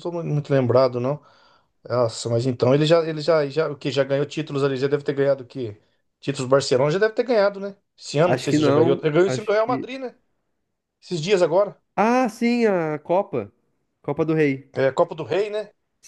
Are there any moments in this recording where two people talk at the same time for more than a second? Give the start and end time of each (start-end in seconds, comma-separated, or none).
8.2-9.9